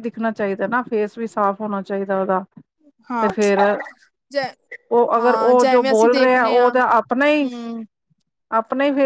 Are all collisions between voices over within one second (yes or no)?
no